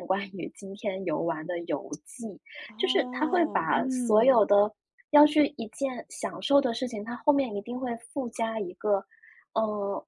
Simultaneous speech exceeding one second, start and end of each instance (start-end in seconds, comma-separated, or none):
2.8-4.4